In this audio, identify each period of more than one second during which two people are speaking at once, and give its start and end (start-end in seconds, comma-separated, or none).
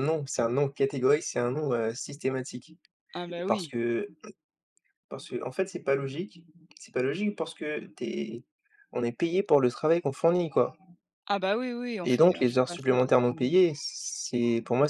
12.0-13.3